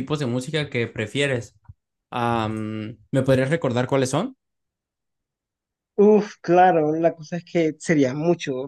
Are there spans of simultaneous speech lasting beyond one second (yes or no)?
no